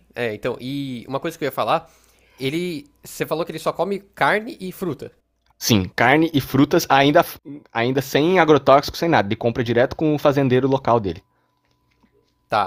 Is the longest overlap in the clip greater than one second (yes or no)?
no